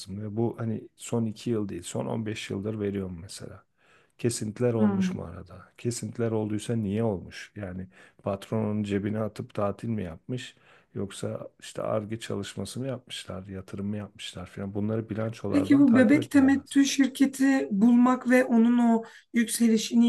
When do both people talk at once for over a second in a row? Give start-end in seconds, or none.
15.5-16.8